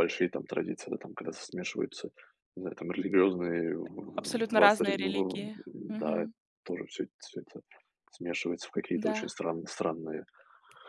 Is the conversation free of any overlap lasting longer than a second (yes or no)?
no